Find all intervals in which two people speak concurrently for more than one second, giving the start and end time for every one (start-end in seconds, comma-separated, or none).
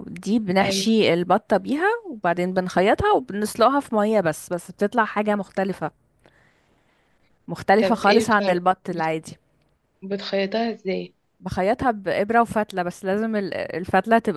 7.8-9.2